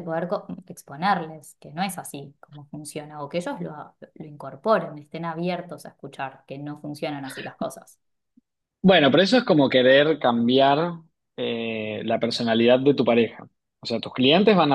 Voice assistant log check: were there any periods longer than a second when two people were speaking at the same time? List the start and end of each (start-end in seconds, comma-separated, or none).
none